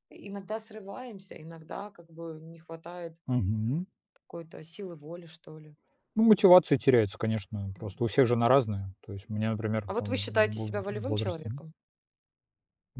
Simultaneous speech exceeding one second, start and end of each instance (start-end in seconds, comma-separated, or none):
9.9-11.5